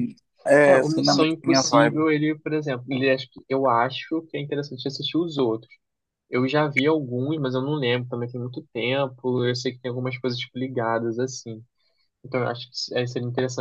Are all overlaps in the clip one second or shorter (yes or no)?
no